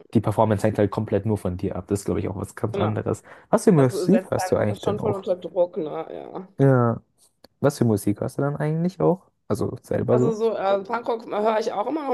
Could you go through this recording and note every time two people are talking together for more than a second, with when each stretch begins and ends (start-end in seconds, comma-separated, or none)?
3.8-5.2